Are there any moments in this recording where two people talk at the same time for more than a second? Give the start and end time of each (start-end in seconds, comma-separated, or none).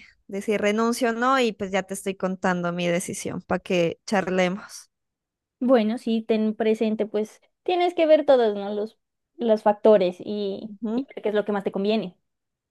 none